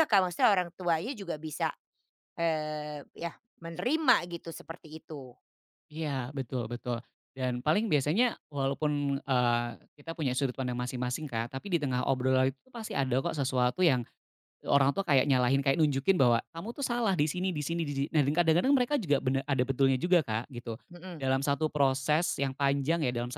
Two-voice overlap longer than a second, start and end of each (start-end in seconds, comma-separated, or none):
none